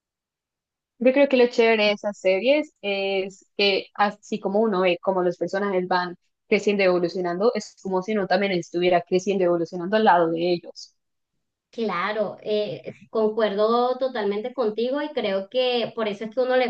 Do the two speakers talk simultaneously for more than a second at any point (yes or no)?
no